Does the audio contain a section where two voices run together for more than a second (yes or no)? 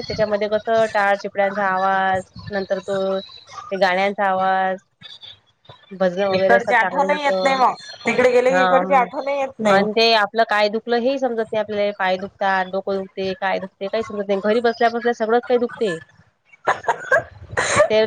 yes